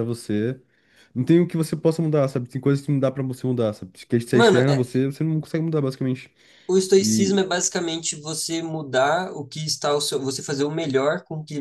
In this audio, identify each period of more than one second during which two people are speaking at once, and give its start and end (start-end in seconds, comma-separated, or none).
none